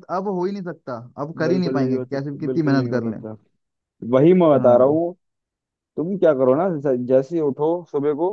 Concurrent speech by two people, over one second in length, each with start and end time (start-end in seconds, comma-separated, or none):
1.4-3.2